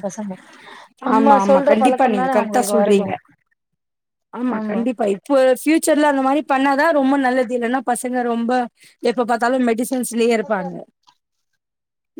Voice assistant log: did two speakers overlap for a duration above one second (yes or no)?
yes